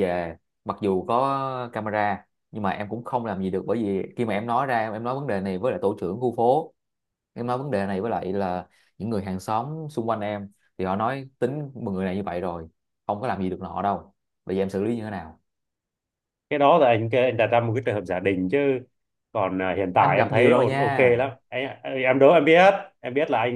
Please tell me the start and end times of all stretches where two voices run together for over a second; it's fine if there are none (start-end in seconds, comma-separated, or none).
19.9-21.1